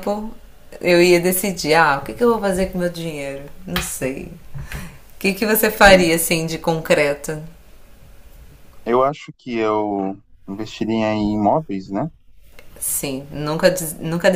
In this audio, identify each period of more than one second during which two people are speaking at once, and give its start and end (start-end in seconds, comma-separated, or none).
none